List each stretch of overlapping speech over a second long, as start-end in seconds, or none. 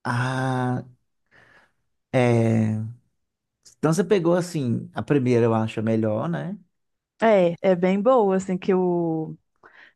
none